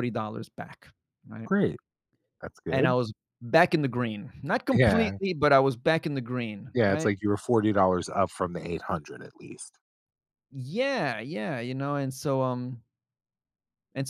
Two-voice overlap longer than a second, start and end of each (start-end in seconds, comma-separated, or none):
none